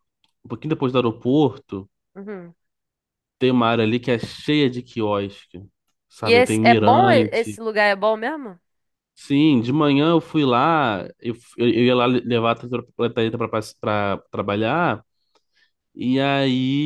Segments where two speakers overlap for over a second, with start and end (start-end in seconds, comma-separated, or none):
6.2-7.6